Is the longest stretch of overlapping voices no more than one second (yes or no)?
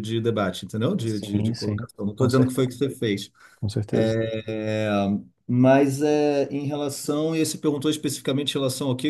no